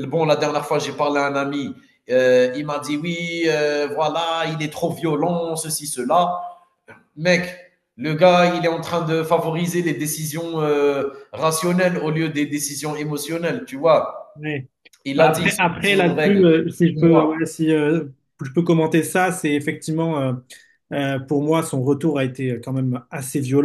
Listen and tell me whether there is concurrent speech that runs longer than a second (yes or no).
yes